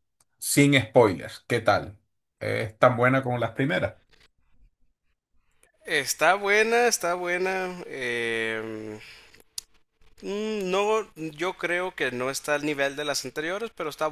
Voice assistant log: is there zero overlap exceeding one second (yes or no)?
yes